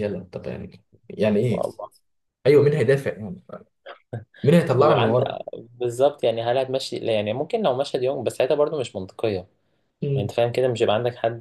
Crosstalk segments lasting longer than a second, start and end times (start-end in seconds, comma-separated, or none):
none